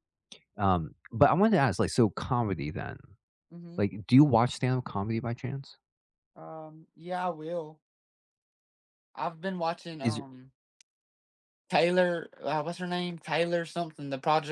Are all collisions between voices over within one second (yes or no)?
yes